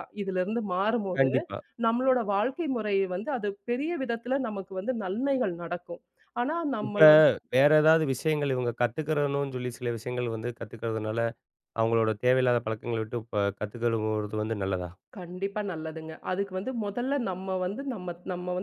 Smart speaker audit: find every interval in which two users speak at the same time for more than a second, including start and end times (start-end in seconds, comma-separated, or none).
none